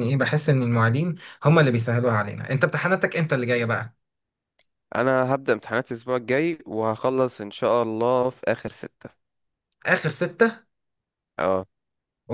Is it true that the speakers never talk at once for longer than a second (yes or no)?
yes